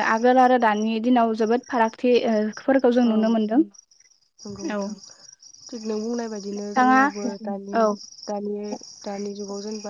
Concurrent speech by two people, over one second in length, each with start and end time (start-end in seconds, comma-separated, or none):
none